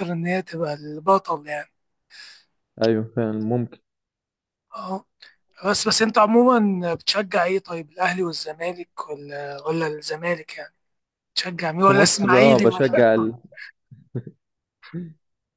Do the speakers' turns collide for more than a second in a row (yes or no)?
yes